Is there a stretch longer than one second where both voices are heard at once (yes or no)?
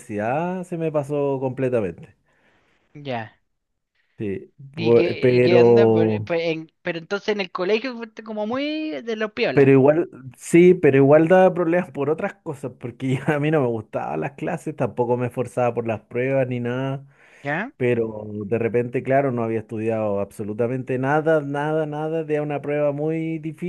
yes